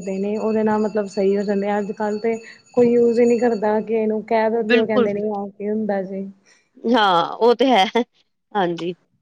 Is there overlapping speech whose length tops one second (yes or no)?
no